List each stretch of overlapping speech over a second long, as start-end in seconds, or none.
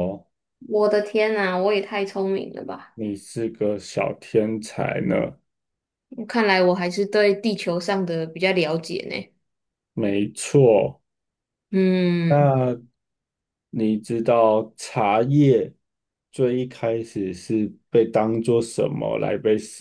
none